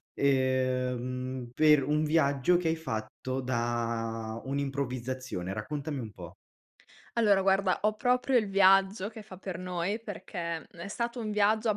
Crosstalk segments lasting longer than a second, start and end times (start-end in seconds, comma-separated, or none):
none